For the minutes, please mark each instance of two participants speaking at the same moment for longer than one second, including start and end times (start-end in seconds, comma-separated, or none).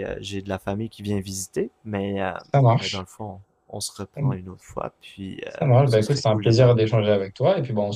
5.5-6.8